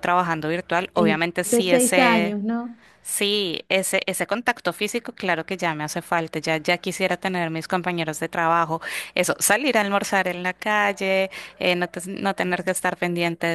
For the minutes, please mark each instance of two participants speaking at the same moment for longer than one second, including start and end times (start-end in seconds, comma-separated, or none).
0.9-2.4